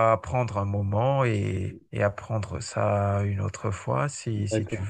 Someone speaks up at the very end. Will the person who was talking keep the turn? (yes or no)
no